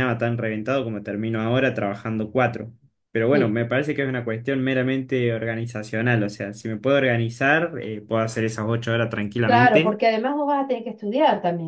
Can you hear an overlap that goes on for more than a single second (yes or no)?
no